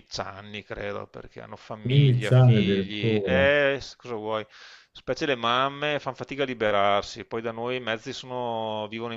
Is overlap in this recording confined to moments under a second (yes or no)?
no